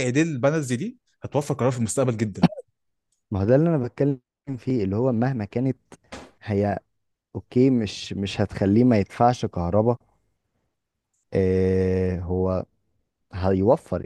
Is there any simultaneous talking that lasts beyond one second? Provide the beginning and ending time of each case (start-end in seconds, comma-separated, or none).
none